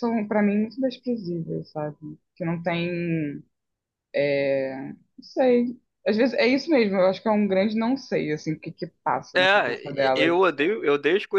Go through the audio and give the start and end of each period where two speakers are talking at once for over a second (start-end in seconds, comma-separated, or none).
9.3-10.7